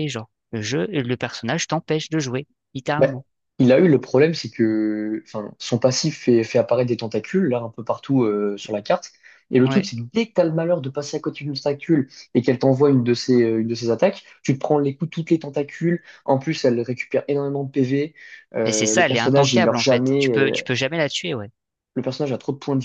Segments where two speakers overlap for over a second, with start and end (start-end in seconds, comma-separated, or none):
18.6-20.6